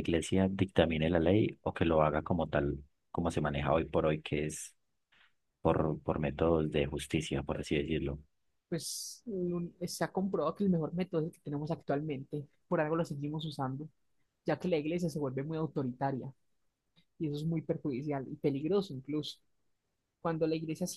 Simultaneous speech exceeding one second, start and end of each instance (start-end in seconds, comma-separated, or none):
none